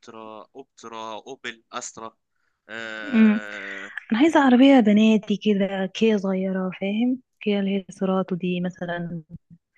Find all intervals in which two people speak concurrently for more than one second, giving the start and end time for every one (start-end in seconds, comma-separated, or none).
none